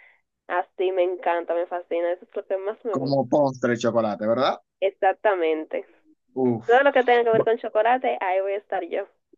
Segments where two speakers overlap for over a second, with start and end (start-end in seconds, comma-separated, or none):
none